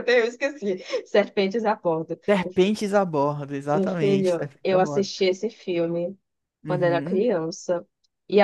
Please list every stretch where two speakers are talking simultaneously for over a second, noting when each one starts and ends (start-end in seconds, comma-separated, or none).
3.7-5.1